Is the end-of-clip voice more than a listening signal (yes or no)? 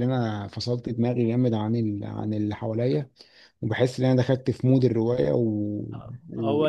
no